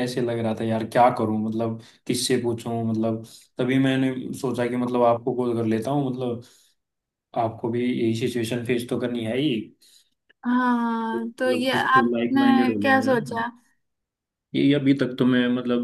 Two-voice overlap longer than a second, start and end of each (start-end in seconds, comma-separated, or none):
11.2-13.4